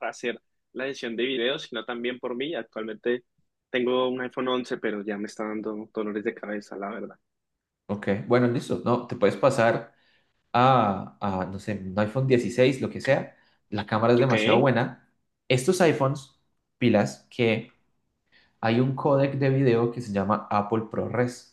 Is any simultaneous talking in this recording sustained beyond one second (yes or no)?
no